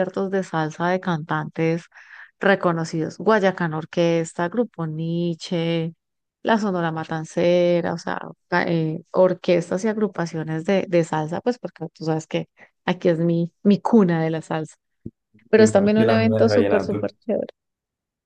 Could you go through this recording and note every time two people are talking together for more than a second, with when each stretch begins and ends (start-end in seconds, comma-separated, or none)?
15.6-17.1